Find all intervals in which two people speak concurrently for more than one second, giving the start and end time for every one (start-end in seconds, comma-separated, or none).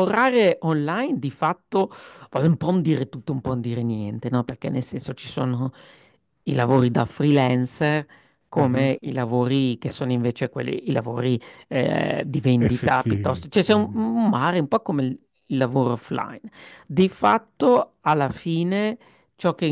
12.6-14.1